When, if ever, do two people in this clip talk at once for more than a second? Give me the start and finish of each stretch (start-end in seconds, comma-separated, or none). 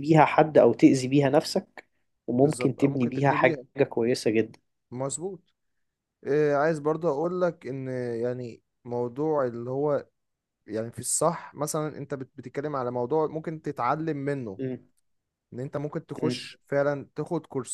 2.4-3.6